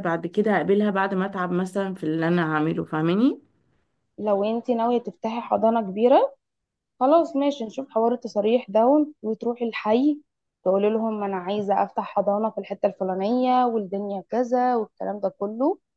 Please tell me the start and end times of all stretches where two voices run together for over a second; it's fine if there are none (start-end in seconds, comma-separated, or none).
none